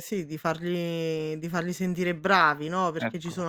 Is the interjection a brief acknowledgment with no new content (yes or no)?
yes